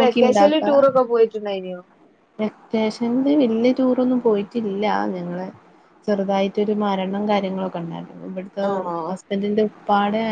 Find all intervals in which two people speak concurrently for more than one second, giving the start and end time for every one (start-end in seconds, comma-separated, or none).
none